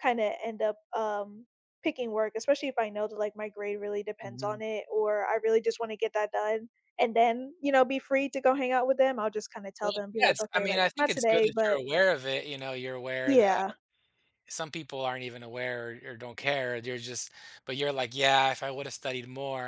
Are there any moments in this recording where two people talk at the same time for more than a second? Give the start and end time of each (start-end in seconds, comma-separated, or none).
9.8-11.8